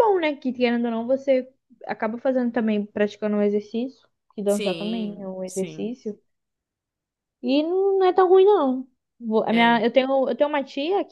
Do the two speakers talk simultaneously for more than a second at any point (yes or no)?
yes